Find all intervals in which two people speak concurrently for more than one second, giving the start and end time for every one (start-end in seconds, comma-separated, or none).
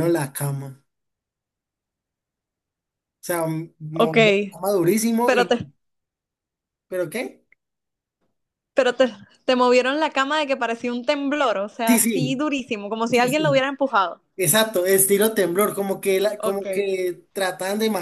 none